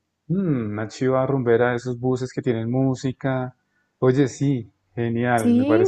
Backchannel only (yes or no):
no